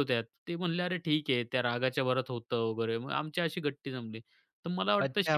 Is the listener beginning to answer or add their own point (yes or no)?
yes